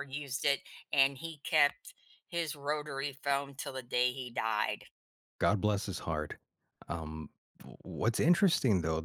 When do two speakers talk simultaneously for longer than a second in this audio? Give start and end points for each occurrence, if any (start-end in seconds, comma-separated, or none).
none